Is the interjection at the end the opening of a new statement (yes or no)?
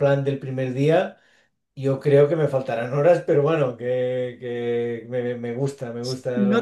yes